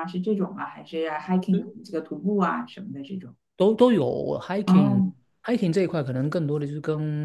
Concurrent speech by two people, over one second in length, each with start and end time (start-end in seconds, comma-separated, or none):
none